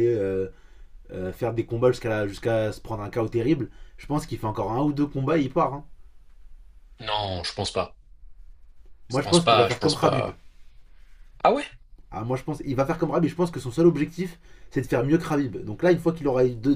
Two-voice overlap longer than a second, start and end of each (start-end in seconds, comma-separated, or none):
9.1-10.3